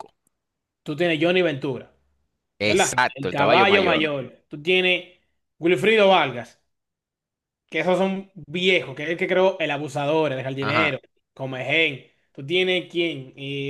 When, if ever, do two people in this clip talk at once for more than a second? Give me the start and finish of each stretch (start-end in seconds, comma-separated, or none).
2.6-4.1